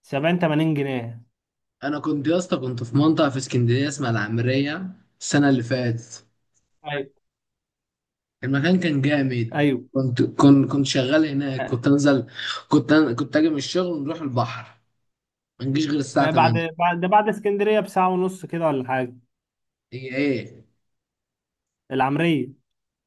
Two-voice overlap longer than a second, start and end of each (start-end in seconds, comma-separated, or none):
none